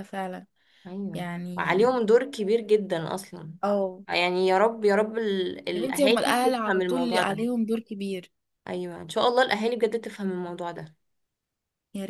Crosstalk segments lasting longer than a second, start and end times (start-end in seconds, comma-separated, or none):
5.8-7.4